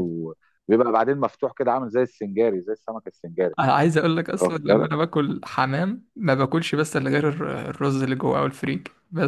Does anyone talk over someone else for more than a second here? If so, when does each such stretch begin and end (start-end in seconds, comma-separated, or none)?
none